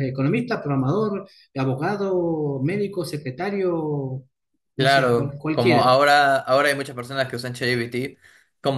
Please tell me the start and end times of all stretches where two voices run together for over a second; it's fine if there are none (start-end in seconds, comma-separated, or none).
4.8-6.0